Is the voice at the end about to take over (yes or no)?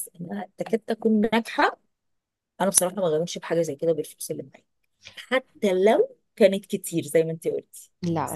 yes